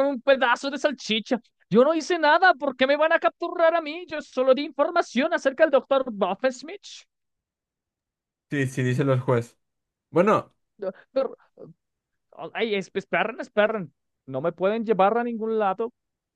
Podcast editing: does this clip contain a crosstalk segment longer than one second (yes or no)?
no